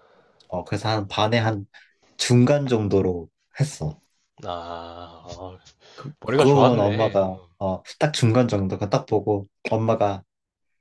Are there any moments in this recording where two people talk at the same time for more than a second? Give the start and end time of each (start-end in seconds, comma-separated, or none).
6.2-7.5